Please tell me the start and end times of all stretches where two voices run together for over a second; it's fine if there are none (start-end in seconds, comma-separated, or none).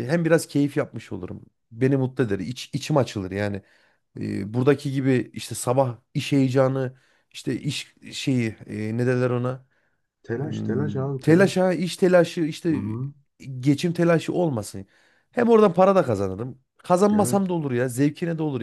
10.4-11.7